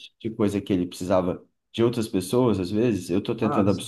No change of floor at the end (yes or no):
yes